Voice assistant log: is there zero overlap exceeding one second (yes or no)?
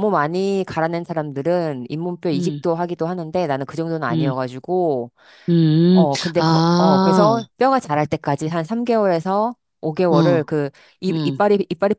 no